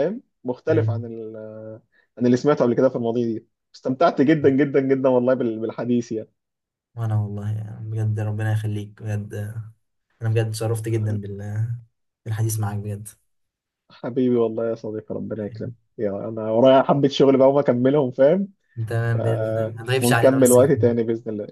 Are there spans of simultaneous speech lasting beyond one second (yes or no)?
yes